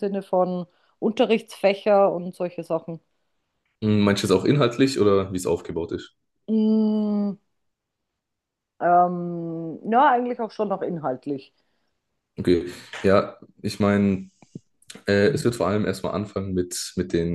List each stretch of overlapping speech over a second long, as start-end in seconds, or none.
none